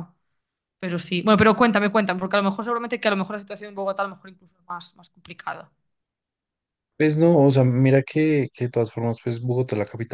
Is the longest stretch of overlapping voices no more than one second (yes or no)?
yes